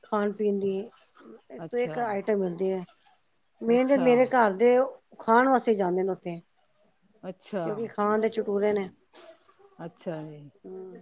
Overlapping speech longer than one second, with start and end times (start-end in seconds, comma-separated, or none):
none